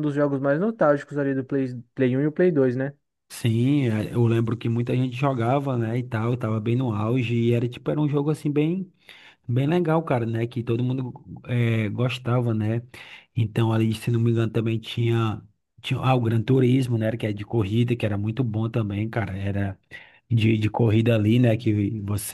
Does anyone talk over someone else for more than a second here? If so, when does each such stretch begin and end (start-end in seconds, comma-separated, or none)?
none